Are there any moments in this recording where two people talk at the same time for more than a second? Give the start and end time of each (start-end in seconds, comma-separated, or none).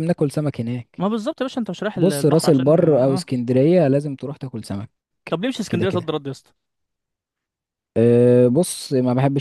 1.9-3.2